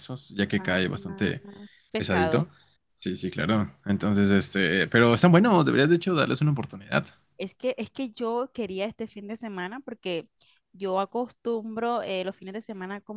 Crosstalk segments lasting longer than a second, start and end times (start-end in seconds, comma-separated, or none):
none